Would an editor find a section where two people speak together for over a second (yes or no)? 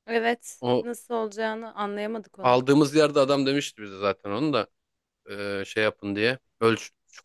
no